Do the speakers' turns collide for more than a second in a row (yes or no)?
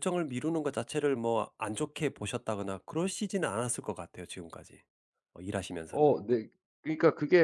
no